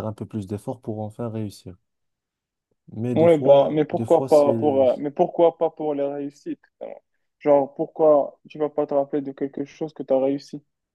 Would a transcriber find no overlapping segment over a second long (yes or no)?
no